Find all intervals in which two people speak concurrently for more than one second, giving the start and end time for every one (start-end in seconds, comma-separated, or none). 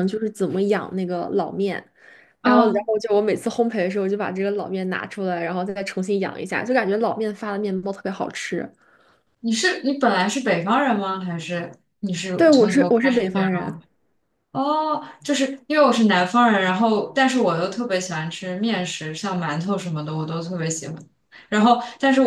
12.4-13.8